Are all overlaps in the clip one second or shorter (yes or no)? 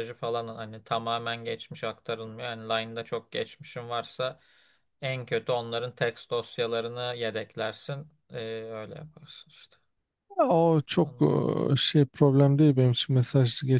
yes